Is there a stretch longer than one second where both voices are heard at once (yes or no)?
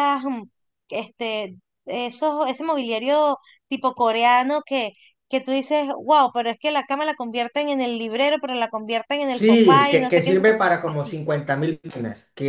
yes